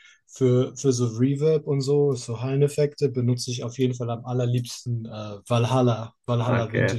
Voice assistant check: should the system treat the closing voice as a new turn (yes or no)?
yes